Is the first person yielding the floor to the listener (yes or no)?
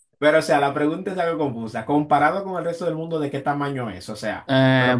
yes